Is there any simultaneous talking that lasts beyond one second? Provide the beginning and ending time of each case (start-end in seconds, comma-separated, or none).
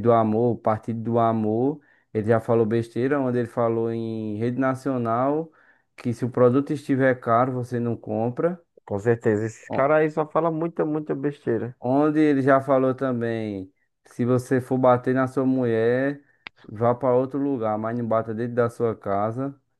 none